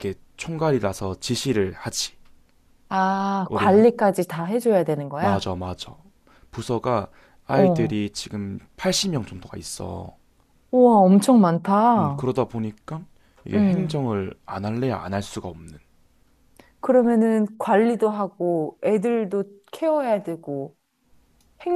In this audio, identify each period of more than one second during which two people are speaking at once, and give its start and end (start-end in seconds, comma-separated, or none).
none